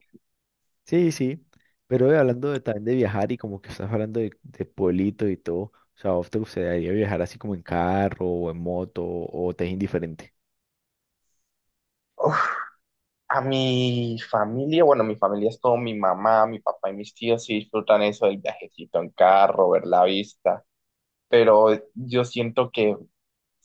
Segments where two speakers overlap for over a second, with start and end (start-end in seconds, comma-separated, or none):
none